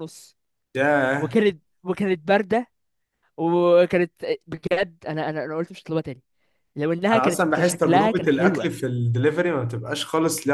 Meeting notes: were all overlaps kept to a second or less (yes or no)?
no